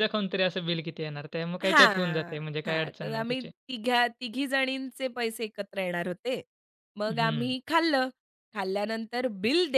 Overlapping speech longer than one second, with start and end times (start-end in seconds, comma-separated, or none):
1.6-3.5